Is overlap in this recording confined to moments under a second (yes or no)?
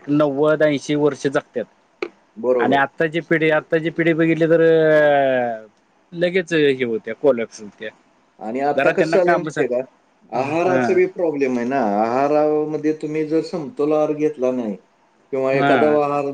yes